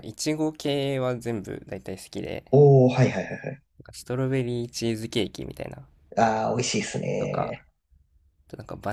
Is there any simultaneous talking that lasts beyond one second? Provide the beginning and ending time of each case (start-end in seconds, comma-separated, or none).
none